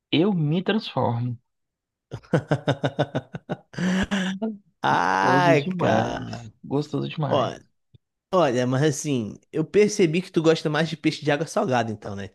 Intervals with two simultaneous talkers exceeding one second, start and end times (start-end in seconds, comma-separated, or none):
4.9-6.5